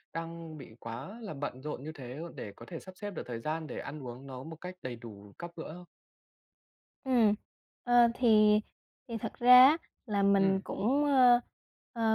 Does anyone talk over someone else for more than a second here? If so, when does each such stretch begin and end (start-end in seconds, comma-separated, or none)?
none